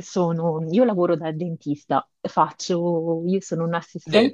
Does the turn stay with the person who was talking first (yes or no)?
yes